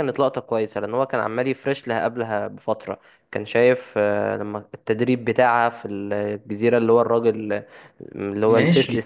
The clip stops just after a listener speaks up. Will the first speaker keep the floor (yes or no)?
no